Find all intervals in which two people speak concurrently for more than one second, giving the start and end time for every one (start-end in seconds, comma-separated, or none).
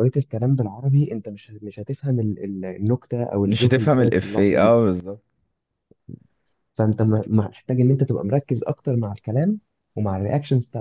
3.4-4.7